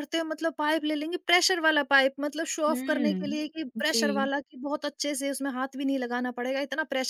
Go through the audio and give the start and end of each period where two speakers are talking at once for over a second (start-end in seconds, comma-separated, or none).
2.7-4.3